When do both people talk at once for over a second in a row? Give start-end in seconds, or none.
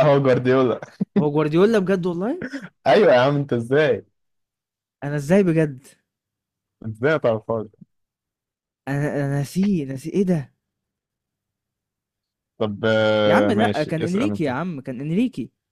13.2-14.5